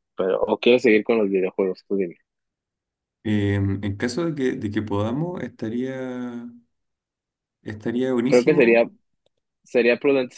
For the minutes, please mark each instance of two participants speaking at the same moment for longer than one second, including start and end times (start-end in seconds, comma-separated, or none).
none